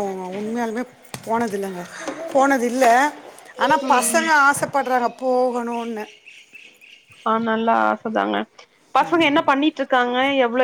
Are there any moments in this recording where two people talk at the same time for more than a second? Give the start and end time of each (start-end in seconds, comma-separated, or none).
none